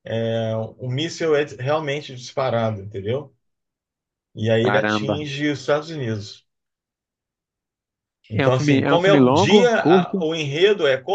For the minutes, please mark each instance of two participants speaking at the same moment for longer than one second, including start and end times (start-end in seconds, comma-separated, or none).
8.3-10.2